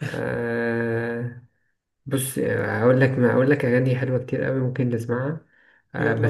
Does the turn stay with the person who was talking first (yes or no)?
yes